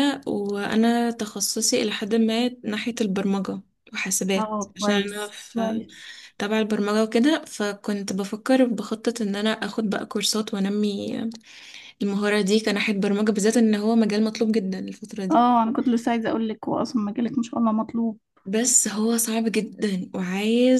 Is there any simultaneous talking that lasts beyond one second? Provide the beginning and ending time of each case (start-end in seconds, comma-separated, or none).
4.4-5.8